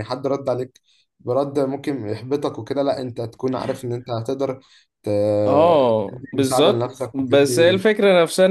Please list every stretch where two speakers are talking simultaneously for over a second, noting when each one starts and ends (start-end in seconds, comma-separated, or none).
6.1-7.8